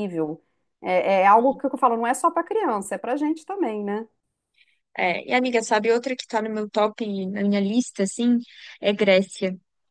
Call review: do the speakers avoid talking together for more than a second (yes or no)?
yes